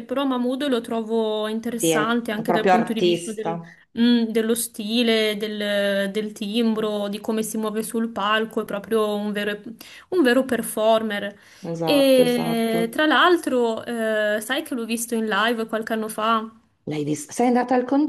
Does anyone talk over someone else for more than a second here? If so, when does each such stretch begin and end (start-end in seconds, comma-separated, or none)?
1.8-3.6, 11.8-13.0